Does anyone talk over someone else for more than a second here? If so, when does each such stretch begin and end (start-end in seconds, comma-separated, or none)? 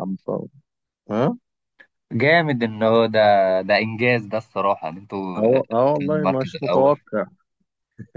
5.3-6.9